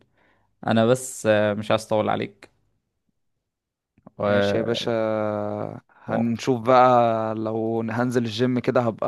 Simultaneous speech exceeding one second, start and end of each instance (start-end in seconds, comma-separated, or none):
none